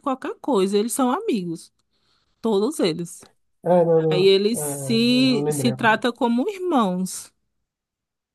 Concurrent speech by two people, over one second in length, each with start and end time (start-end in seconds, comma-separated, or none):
4.1-6.0